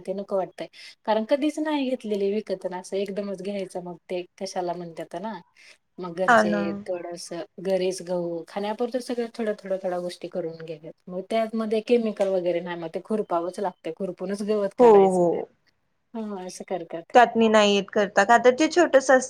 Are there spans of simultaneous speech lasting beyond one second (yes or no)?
no